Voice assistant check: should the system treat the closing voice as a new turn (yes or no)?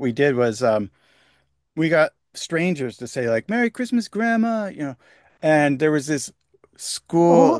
no